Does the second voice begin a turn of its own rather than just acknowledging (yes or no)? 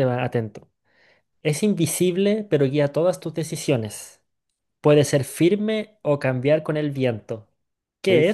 yes